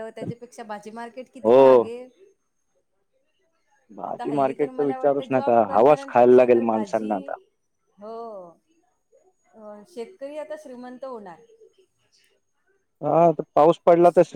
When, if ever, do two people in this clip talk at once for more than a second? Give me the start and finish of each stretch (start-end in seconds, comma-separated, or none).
4.1-7.1